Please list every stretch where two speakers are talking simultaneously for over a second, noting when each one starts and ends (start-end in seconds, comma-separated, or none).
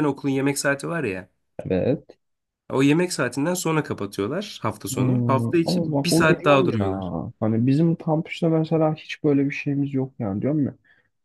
4.9-7.1